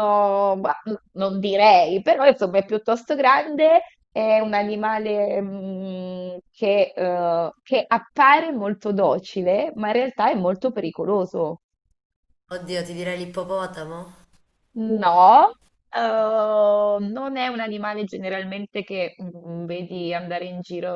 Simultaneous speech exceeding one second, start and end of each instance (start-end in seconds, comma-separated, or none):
none